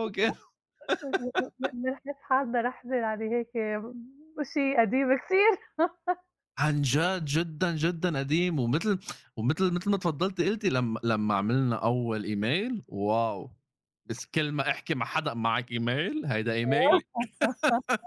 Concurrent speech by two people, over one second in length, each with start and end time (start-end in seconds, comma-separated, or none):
none